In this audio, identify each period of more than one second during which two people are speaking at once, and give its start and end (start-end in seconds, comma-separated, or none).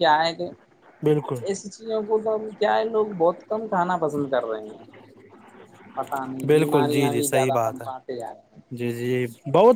6.5-7.9